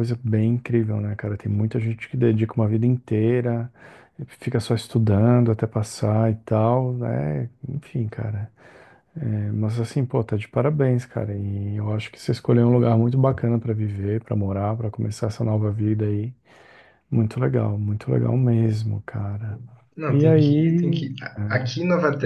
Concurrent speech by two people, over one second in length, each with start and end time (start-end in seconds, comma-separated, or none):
20.1-21.7